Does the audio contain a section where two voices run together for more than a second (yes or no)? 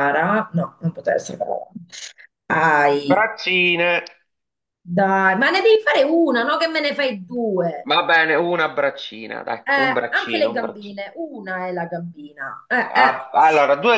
yes